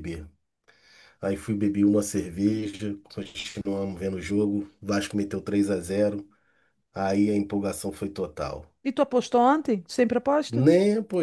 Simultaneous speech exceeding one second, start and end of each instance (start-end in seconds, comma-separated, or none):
none